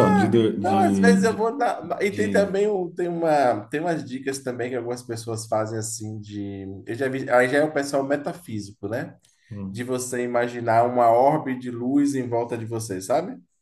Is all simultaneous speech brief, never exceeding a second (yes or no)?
no